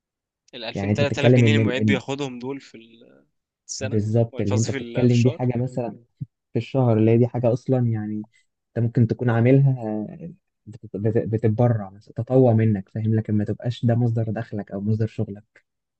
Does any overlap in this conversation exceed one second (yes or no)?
yes